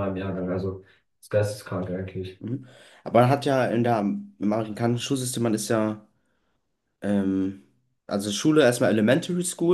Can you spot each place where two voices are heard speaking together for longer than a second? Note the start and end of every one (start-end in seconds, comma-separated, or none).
none